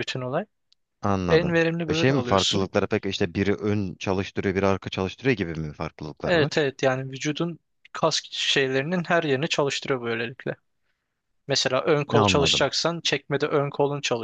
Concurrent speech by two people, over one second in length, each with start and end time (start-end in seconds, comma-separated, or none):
1.3-2.7